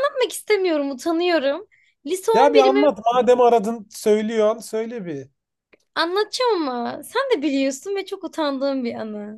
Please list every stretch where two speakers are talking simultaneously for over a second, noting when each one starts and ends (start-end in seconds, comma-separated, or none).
none